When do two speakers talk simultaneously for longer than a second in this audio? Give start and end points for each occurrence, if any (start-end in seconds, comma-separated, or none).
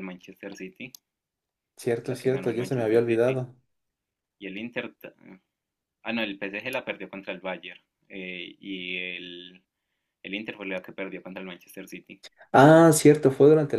2.0-3.4